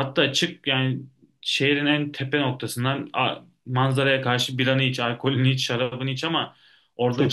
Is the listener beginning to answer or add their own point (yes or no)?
no